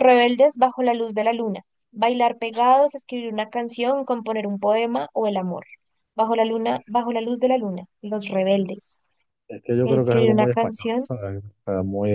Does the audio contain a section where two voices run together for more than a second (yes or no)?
yes